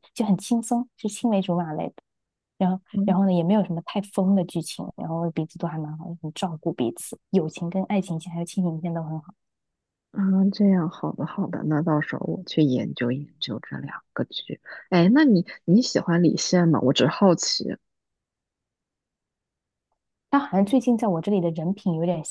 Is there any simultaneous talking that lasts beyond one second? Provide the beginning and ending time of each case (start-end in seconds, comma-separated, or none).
none